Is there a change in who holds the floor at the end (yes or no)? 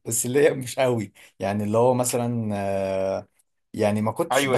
yes